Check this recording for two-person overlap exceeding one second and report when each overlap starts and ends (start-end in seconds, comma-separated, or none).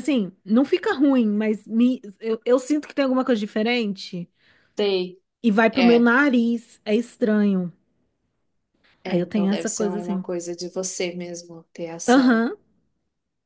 9.0-10.2